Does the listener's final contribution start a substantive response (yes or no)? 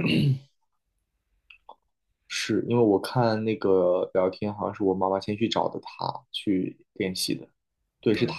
no